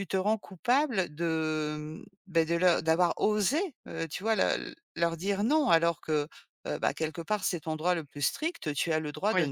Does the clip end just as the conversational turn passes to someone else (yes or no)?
no